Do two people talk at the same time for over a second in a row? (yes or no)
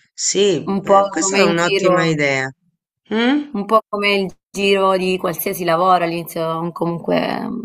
yes